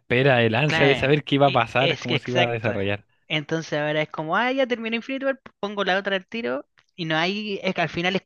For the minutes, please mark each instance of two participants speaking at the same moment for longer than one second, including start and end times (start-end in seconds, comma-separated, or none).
0.6-2.7